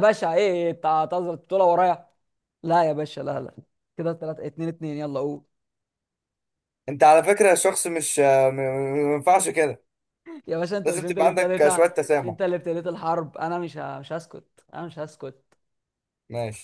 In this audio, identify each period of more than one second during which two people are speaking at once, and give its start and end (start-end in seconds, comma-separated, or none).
10.8-12.4